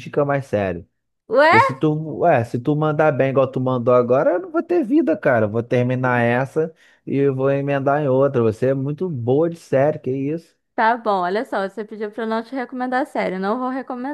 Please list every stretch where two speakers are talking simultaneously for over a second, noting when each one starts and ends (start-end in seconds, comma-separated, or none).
none